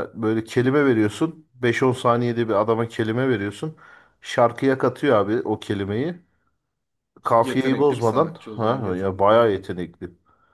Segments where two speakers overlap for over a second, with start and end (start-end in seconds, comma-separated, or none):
7.2-9.6